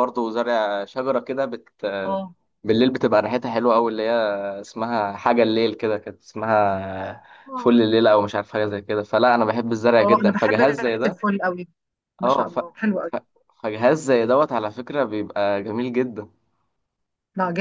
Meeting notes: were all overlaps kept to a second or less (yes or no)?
no